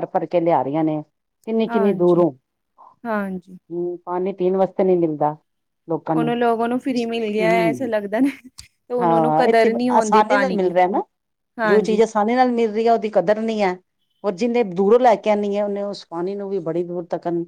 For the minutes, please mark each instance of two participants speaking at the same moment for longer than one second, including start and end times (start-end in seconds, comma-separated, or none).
9.0-10.7